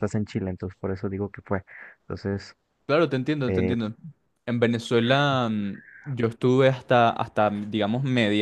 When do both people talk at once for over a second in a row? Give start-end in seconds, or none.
none